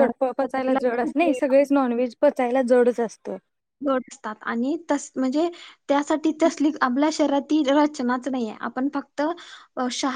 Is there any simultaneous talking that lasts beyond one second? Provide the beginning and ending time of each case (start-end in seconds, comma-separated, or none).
none